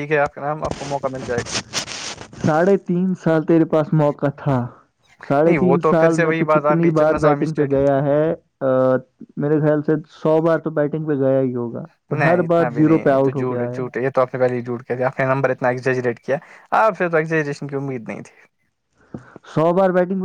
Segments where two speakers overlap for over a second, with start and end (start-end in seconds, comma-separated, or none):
5.5-8.0, 12.3-13.8